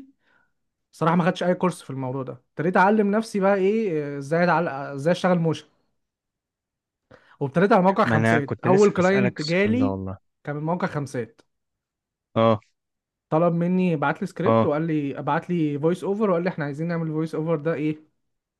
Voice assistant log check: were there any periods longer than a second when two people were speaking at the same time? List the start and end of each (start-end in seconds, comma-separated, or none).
8.0-9.9